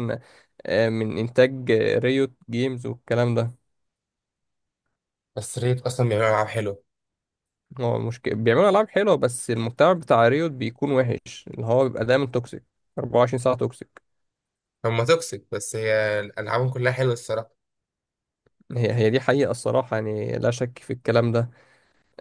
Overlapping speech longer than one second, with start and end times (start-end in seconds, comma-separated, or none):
none